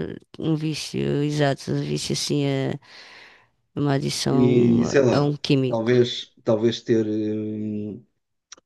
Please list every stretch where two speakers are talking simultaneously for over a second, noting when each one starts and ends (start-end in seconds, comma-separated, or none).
4.3-5.9